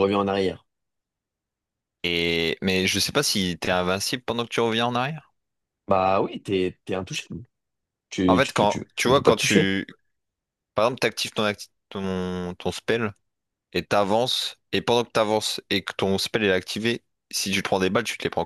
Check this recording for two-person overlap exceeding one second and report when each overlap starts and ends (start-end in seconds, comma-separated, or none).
8.3-9.7